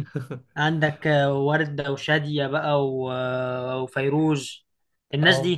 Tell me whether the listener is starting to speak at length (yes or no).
yes